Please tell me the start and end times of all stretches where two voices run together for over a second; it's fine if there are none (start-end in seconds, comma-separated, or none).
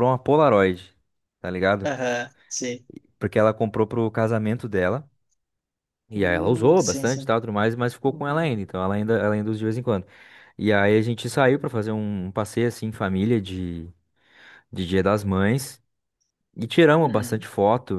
6.1-7.3